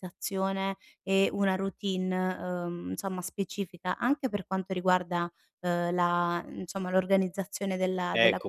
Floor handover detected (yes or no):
yes